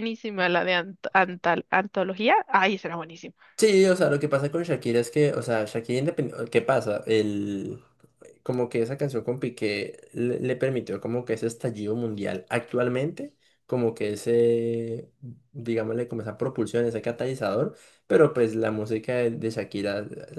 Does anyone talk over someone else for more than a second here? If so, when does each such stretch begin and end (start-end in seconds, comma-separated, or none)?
none